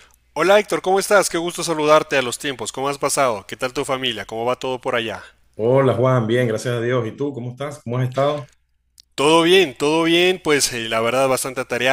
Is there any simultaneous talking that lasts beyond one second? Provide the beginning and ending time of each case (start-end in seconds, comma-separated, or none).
none